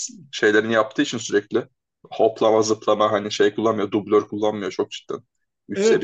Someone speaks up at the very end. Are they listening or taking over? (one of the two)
taking over